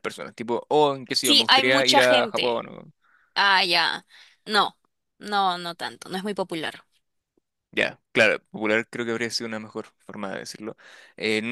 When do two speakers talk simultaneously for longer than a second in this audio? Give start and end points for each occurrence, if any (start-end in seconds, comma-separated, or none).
1.2-2.6